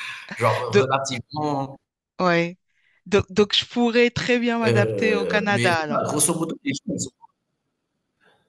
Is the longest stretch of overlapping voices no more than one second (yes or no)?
no